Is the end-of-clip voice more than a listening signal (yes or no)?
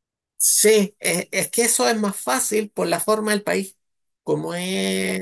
no